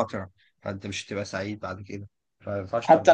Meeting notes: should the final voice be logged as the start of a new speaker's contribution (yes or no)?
yes